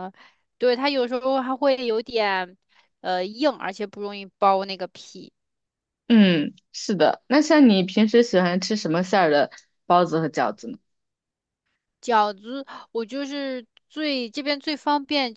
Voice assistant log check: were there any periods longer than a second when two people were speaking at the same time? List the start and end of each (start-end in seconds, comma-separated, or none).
none